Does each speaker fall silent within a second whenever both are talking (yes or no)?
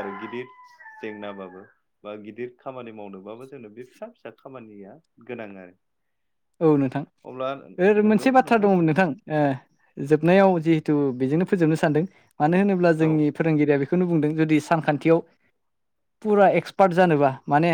yes